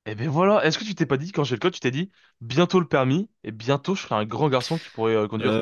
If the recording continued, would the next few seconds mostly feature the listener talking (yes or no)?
yes